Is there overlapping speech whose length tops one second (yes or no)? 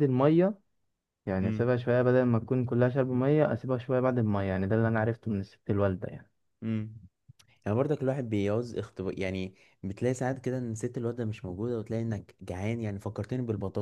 no